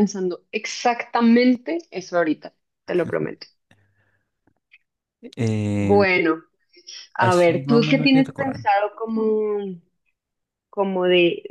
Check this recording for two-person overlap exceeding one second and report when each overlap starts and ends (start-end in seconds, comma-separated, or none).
7.2-8.7